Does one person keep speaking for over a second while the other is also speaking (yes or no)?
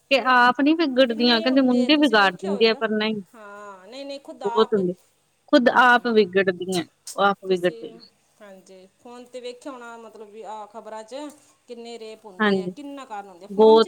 yes